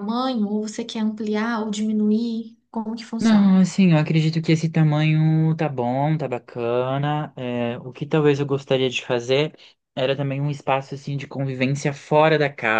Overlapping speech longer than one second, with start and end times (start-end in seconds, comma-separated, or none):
none